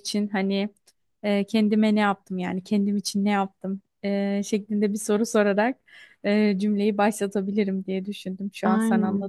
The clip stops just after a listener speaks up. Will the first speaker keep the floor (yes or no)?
yes